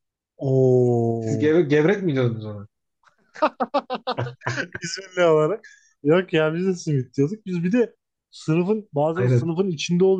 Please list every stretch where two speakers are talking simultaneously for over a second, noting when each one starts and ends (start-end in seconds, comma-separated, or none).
none